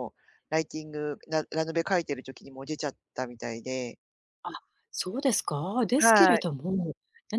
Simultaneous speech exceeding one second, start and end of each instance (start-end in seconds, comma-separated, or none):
none